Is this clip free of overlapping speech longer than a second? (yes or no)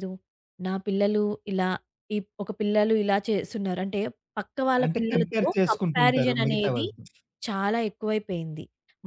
no